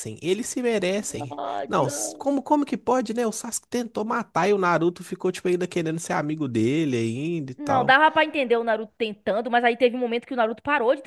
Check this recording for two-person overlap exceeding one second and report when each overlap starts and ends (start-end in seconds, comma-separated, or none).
none